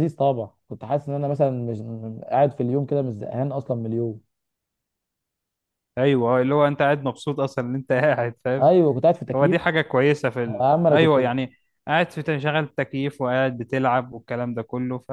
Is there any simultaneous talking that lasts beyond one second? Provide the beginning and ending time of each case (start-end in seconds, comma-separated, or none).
none